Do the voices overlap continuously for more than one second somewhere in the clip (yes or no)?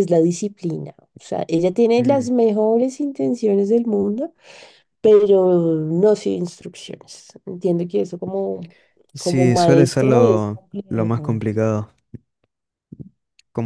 yes